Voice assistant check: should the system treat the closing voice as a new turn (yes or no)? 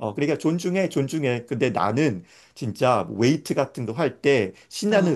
no